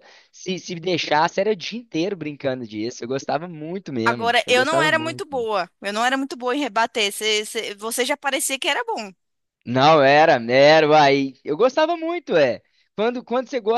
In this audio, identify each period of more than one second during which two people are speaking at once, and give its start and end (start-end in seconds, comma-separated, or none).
4.0-5.5